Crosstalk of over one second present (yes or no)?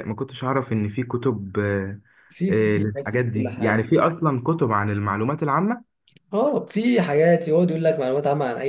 yes